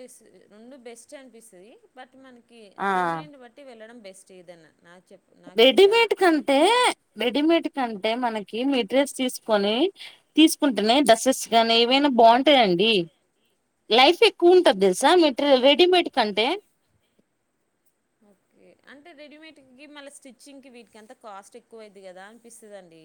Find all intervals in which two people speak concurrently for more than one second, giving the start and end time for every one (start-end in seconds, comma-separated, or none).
none